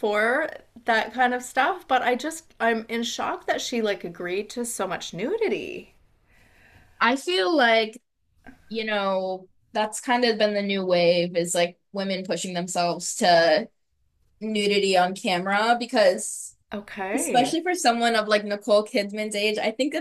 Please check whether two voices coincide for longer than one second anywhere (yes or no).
no